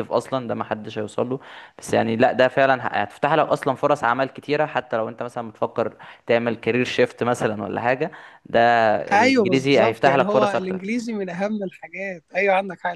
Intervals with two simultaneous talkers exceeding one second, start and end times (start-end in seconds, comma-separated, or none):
9.2-10.8